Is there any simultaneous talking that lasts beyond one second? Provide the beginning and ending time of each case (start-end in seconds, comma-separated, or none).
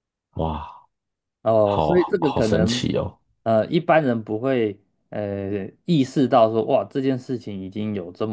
1.6-2.9